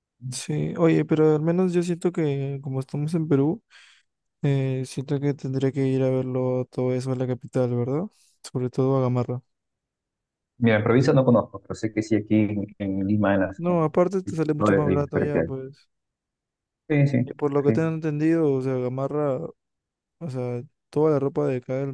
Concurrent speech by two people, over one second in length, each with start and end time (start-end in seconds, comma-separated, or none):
13.6-15.5